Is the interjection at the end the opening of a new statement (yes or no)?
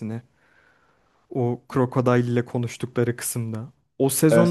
no